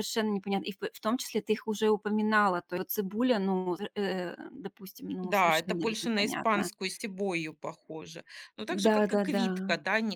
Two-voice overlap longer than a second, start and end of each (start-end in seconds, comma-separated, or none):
5.2-6.7